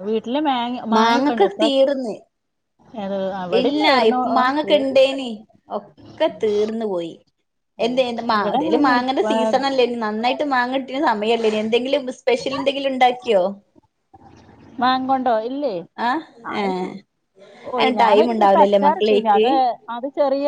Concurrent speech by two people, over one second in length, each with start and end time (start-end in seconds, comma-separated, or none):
17.8-19.4